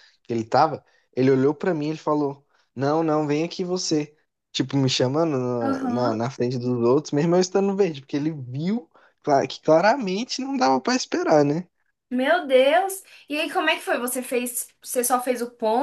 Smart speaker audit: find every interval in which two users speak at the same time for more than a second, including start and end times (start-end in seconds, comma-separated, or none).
none